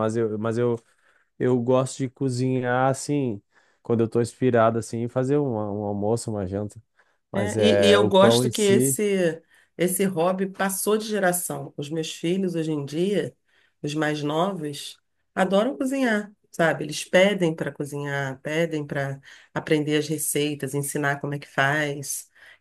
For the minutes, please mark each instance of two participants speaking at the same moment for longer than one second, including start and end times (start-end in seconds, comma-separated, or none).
7.3-9.0